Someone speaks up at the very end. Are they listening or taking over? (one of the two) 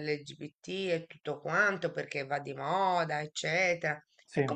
listening